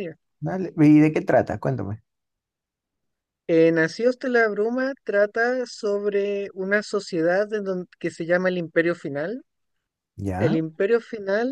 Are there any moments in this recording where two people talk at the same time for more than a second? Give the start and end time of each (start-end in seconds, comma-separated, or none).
none